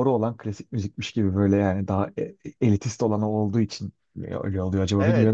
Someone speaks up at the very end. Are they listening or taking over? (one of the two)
taking over